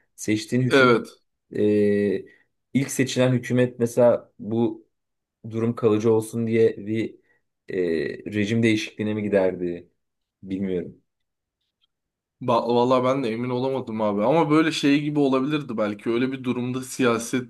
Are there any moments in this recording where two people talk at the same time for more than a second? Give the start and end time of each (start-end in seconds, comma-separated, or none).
none